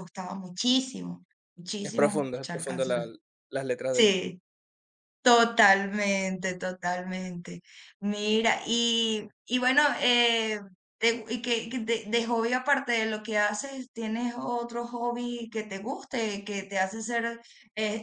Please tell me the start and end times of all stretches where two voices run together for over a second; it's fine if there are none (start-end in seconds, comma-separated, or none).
1.8-3.0